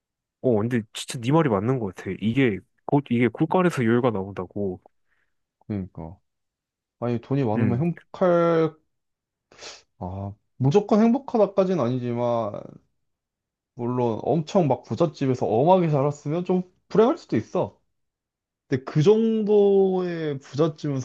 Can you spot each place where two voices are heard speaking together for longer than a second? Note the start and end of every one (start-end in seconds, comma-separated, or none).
none